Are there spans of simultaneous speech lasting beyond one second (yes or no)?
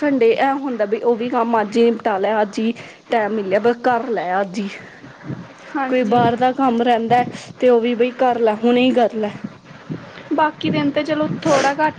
no